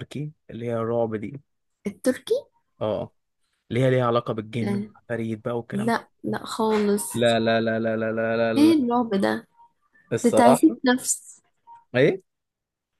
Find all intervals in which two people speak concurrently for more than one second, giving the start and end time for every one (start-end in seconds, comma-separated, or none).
none